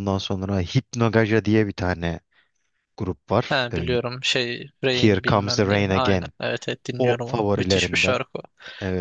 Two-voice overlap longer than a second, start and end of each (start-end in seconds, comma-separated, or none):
4.9-6.3, 7.0-8.2